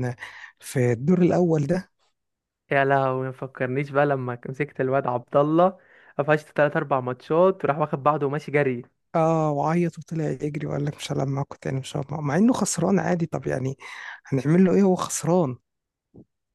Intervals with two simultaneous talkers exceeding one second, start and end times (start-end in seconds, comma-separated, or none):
none